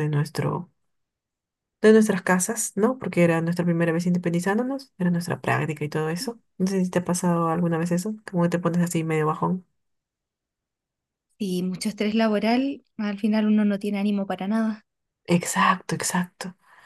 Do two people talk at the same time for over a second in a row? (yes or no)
no